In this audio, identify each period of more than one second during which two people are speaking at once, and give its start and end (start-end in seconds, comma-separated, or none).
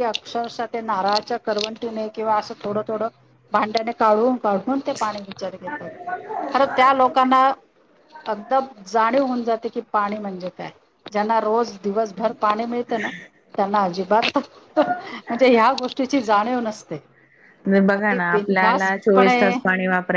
17.9-19.5